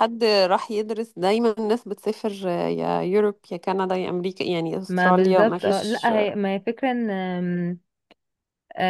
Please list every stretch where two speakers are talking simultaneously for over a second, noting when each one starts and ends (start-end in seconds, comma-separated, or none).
4.9-6.1